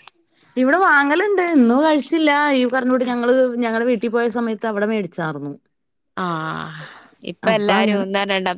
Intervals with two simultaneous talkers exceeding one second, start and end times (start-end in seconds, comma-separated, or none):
none